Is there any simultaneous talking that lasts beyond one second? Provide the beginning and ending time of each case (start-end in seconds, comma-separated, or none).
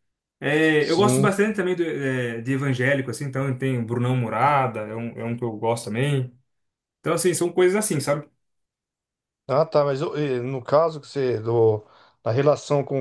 none